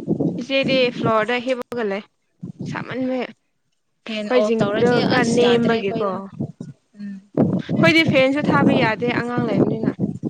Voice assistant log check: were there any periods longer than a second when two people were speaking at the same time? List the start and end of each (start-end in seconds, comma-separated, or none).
4.3-6.1